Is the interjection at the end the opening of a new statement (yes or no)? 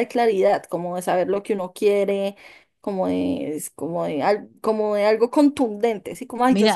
no